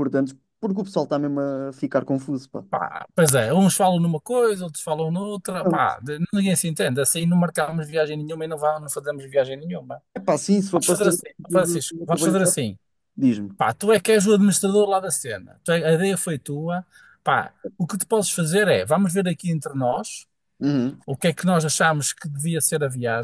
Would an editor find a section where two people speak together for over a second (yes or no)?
yes